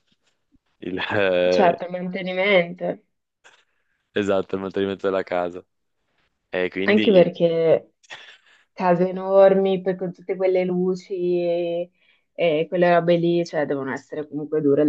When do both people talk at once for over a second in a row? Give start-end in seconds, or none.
none